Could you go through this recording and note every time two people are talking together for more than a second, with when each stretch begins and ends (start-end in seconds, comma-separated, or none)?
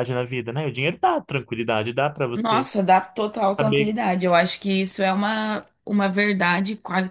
none